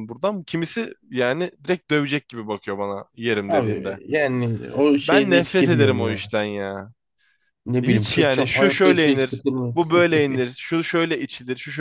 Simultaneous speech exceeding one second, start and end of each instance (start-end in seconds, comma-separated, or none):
5.0-6.3, 7.8-9.8